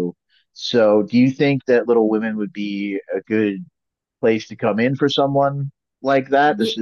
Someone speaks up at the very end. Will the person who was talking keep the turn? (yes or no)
yes